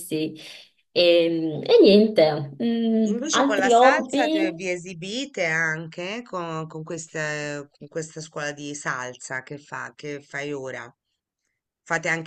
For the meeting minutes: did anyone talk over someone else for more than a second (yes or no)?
yes